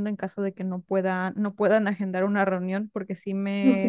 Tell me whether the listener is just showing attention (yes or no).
yes